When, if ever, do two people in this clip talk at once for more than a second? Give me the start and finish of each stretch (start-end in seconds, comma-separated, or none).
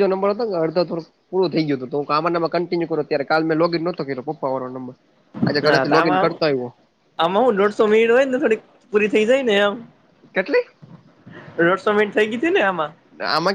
none